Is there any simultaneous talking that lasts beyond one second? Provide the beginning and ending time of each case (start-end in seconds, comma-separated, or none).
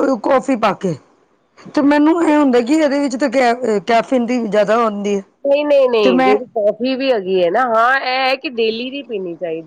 none